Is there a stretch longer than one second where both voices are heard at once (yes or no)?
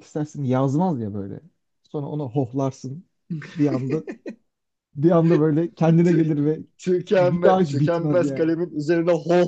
yes